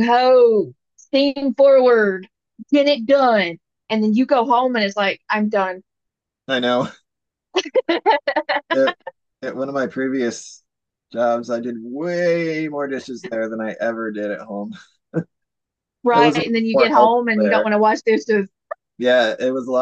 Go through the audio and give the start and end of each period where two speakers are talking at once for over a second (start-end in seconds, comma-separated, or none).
16.1-17.7